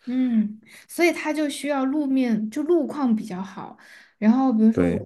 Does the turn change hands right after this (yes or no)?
no